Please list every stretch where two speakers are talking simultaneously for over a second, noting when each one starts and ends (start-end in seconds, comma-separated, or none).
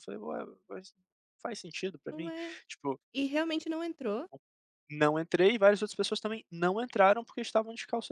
none